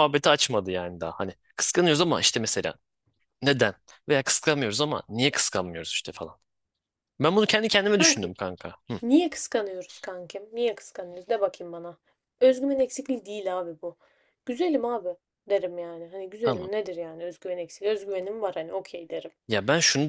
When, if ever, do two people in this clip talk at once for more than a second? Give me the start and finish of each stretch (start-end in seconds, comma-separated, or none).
none